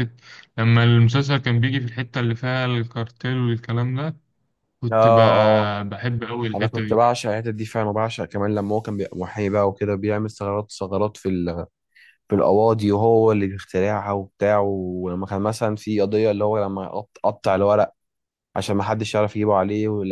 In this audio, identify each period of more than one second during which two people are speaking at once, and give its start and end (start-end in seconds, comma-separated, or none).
none